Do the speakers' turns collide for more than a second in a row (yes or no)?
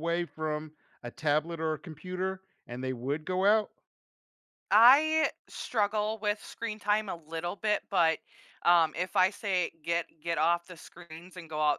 no